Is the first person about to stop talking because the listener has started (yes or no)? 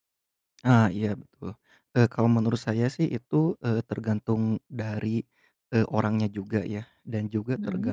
no